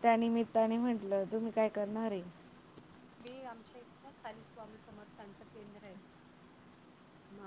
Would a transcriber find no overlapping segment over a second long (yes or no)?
yes